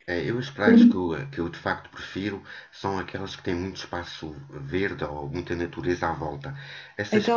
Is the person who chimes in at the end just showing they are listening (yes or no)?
yes